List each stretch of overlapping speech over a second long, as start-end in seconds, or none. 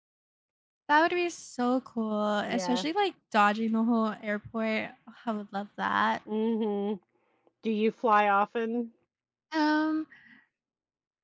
none